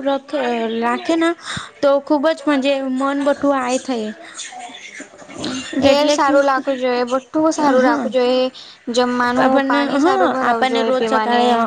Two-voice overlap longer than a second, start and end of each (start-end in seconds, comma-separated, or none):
none